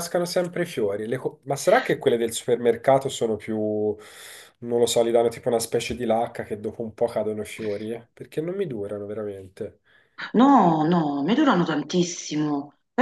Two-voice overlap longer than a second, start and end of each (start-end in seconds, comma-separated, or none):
none